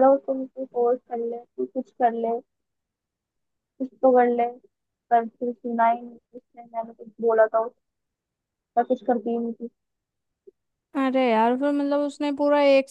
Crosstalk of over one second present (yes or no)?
no